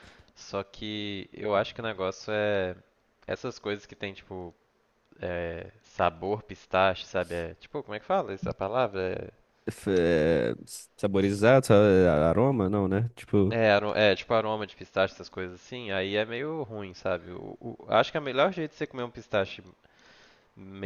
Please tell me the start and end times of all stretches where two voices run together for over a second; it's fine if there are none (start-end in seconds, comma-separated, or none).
none